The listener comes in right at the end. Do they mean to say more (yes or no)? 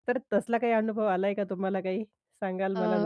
yes